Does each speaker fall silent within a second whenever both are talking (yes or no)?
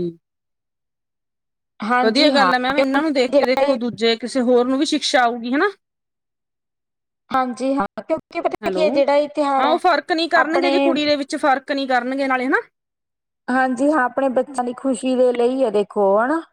no